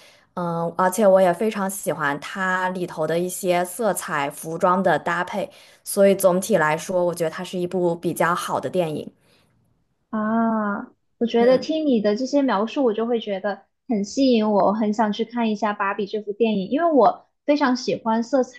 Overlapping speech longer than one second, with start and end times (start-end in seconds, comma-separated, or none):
none